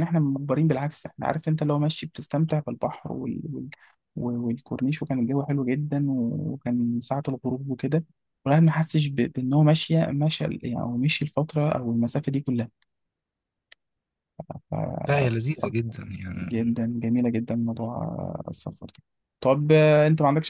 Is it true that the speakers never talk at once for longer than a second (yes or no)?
yes